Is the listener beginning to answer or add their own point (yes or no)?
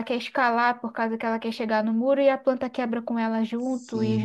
yes